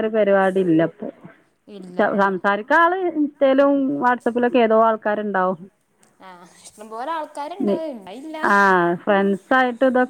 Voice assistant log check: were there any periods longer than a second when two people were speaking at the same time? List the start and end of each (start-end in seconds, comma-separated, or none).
none